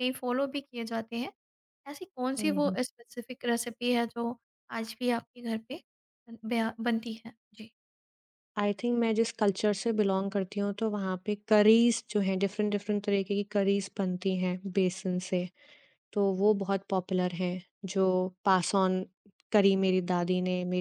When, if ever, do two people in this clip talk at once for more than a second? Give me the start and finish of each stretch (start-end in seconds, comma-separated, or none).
none